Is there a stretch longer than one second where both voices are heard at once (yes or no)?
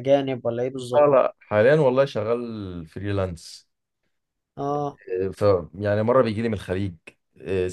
no